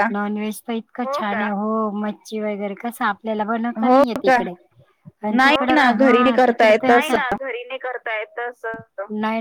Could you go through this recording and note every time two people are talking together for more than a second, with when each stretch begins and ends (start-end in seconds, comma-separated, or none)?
5.4-7.1